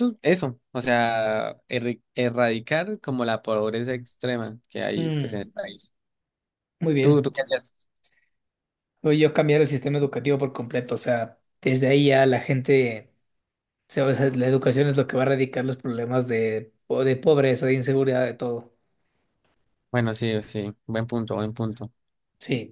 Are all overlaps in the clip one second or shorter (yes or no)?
yes